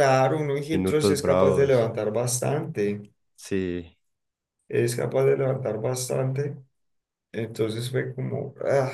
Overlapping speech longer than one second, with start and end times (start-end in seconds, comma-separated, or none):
0.7-1.9